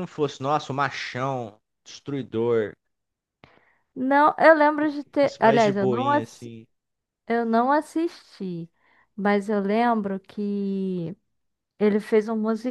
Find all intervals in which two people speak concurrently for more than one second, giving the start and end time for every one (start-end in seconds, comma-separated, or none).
4.8-6.5